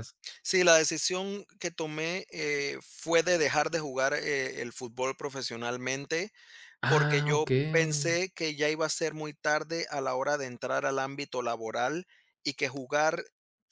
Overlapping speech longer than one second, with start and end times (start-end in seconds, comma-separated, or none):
6.9-8.2